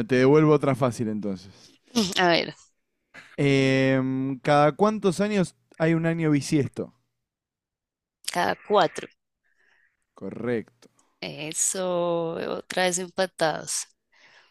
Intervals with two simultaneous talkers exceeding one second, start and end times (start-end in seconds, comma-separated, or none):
none